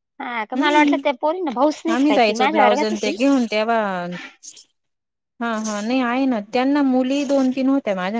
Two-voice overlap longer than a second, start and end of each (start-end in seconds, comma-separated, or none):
0.6-3.1